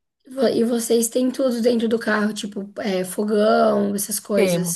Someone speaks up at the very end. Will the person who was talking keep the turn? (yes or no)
no